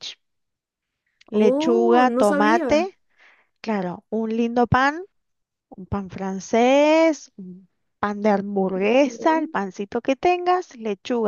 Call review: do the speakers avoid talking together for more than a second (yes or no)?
no